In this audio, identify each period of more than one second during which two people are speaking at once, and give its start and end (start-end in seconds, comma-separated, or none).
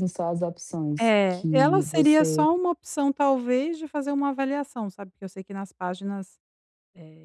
1.0-2.5